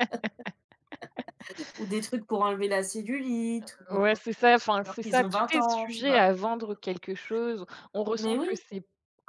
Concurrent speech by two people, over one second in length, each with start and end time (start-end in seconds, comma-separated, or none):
4.8-6.3